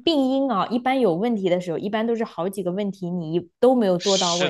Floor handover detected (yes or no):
yes